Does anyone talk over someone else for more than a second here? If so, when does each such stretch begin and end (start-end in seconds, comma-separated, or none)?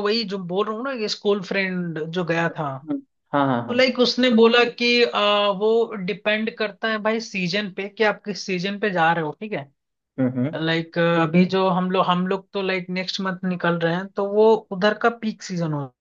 none